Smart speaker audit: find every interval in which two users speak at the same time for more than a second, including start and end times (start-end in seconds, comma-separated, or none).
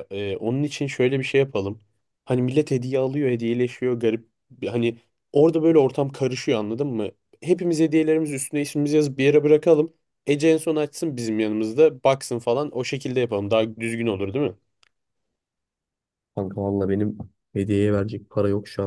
none